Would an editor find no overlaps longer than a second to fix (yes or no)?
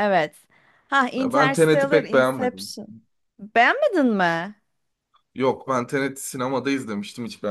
no